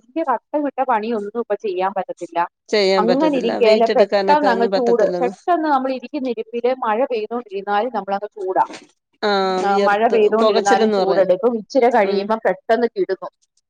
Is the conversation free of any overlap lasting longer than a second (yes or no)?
no